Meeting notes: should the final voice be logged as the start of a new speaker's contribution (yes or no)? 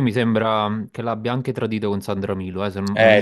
yes